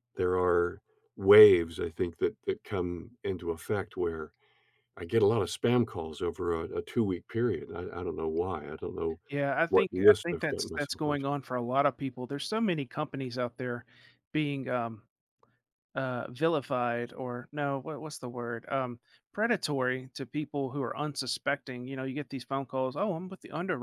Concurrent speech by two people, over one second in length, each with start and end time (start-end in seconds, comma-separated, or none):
9.7-11.2